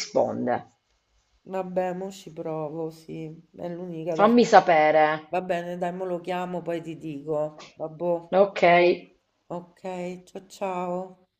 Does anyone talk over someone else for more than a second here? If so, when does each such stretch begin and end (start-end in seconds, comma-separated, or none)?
none